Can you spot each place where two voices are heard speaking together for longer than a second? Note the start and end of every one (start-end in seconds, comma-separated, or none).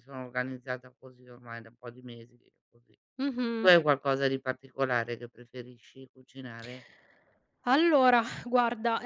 none